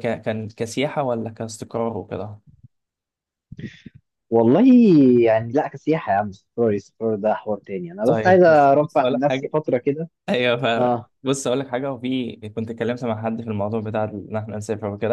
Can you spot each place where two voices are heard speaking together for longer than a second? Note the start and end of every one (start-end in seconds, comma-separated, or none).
8.0-9.5